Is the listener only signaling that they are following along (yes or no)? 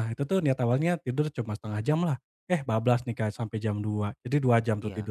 yes